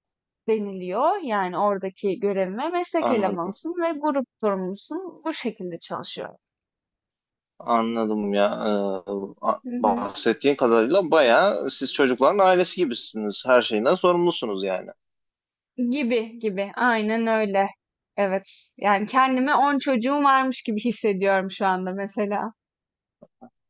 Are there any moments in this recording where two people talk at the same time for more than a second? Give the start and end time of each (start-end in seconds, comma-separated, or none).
none